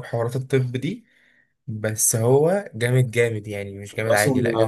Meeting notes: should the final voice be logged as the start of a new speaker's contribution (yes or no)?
yes